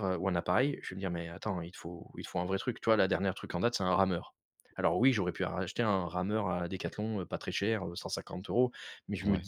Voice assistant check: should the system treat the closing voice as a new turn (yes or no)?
no